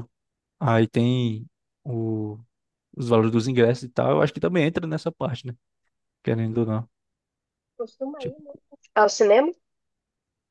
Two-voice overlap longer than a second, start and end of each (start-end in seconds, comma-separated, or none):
none